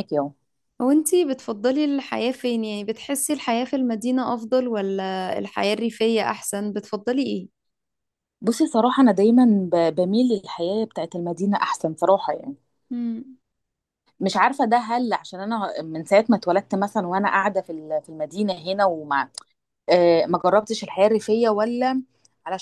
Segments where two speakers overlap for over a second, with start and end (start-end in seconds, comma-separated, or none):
none